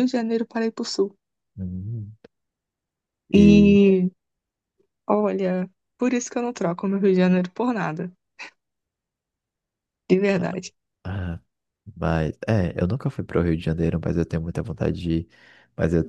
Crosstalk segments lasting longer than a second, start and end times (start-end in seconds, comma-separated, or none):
none